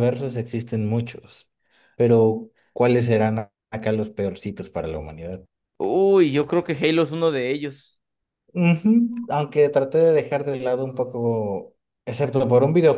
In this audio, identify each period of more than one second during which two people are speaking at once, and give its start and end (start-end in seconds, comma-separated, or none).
none